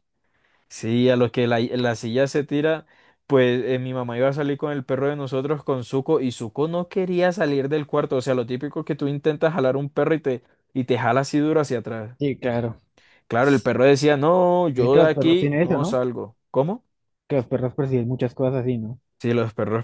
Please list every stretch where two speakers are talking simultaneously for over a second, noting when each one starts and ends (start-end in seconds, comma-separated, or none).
14.7-16.0